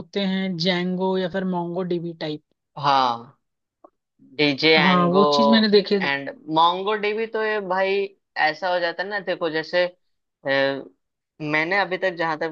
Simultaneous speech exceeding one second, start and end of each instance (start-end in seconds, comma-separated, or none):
none